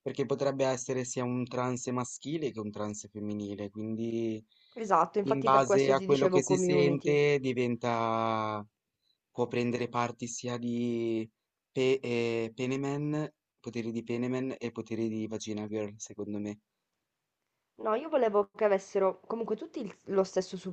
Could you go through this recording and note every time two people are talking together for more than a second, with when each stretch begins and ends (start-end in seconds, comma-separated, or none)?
5.2-7.2